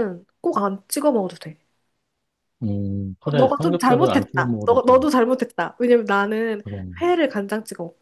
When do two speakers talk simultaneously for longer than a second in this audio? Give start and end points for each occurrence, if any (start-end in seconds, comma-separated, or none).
3.2-5.0